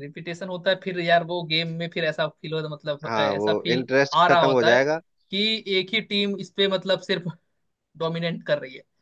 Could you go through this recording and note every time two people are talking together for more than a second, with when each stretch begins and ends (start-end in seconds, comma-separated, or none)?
3.1-4.8